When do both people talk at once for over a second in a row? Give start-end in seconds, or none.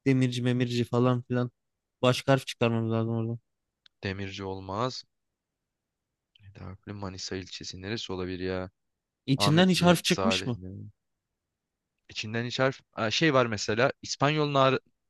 9.4-10.6